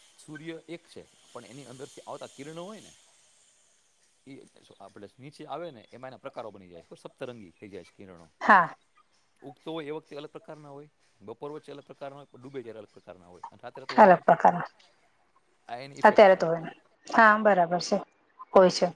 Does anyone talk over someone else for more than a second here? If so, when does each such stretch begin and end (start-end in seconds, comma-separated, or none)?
none